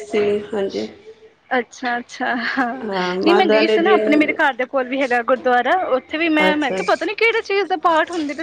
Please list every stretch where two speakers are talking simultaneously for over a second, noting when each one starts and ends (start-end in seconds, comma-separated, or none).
2.9-4.3